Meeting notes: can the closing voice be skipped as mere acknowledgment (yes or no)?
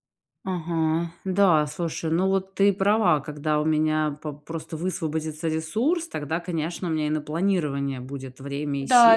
yes